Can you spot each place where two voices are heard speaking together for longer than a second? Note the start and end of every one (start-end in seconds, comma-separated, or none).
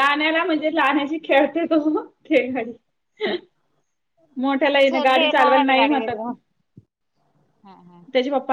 4.7-6.3